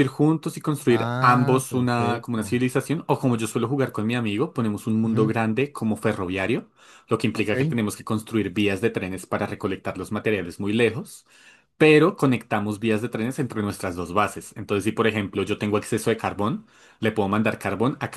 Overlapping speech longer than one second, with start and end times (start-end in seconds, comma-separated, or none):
0.8-2.6